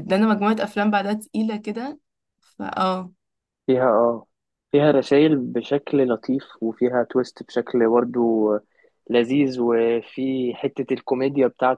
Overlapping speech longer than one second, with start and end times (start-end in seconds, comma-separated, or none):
none